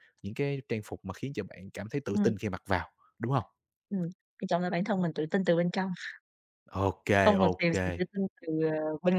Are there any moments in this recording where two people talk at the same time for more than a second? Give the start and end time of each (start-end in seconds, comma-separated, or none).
none